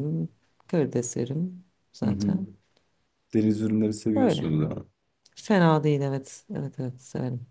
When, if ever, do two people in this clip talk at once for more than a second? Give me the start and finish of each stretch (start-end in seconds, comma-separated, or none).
none